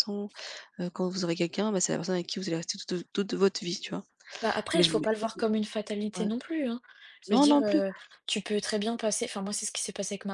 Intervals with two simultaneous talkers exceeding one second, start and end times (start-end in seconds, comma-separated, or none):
none